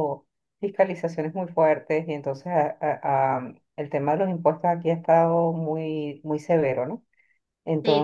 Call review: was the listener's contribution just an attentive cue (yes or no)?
yes